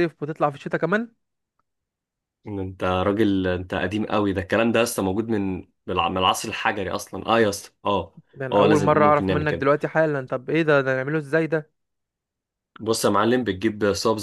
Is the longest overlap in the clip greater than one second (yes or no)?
yes